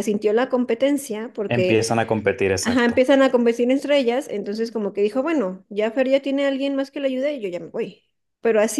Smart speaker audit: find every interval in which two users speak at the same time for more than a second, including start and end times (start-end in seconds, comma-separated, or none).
none